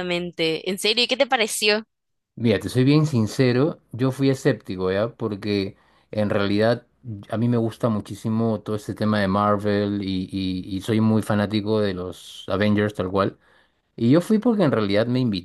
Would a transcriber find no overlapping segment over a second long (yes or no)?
yes